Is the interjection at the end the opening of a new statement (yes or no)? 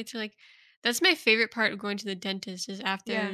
no